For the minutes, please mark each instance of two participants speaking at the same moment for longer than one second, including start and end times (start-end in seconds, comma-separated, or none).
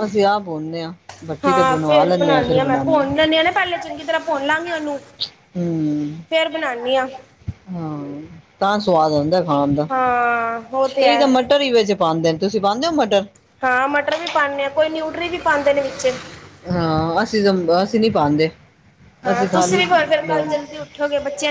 1.4-3.0